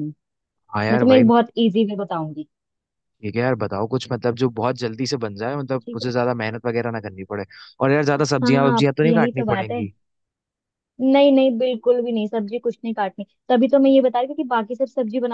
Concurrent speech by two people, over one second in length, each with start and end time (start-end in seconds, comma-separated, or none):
8.2-9.8